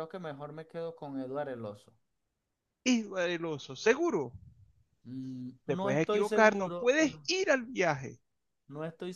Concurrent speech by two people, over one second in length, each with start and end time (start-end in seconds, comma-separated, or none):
5.7-7.3